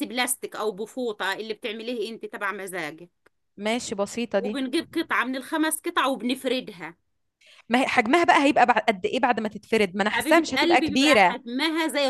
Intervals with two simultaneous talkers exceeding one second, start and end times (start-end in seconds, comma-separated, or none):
10.1-11.4